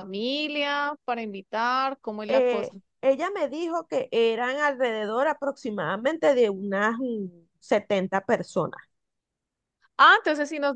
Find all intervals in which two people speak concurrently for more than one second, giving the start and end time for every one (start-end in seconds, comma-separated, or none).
none